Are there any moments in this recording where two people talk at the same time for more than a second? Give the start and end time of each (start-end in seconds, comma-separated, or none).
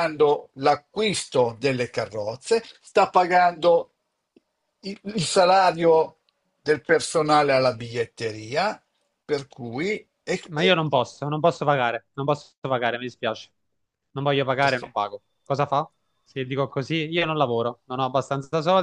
none